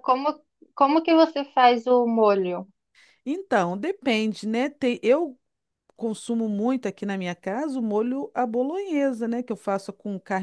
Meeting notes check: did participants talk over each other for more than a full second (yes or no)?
no